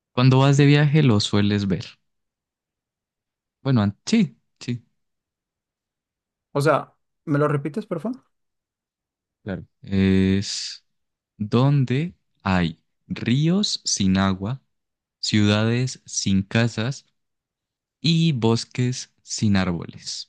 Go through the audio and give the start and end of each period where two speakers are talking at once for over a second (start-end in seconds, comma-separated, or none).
none